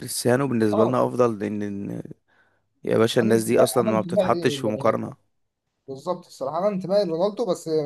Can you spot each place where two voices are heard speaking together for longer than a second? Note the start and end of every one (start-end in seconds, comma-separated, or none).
3.2-5.1